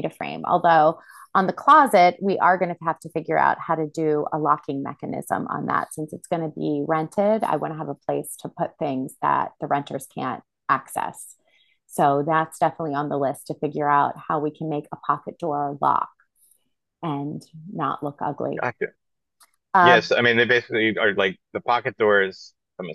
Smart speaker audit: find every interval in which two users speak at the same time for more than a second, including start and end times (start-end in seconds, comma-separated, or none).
none